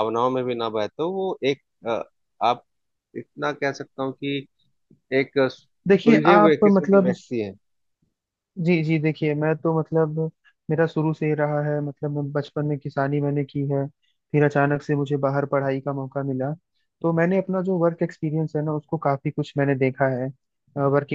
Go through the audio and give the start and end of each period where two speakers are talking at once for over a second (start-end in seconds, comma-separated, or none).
5.9-7.1